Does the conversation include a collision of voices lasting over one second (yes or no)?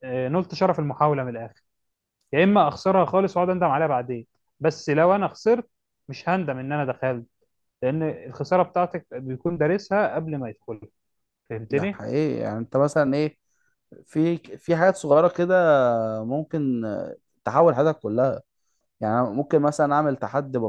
no